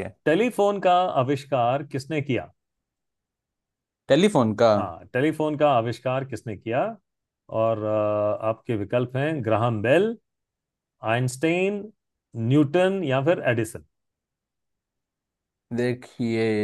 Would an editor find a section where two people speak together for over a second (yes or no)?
no